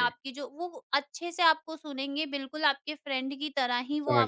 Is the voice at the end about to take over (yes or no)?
no